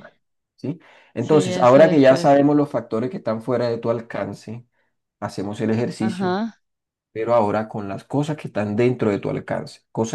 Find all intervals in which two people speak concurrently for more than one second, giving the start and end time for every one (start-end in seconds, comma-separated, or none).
1.2-2.4